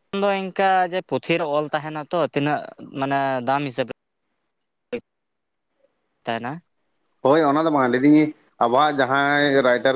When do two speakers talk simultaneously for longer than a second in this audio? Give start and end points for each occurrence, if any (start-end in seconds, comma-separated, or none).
none